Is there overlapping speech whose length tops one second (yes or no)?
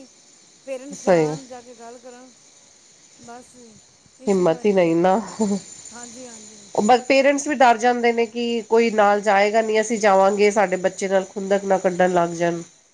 no